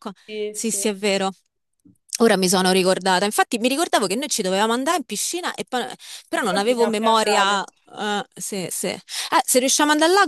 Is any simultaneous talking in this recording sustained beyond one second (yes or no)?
yes